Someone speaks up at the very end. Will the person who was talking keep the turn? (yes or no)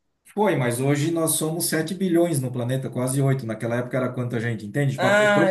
yes